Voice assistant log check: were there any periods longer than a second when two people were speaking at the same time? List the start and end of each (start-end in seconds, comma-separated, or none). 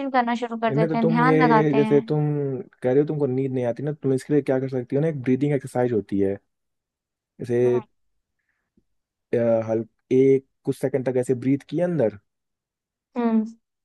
0.7-2.2